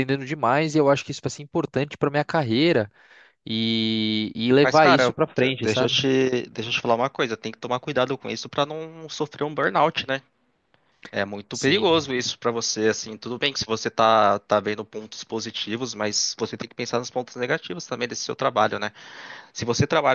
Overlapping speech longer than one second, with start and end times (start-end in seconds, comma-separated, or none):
4.6-6.0